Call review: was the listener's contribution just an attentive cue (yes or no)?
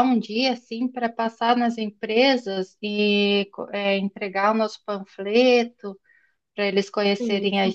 yes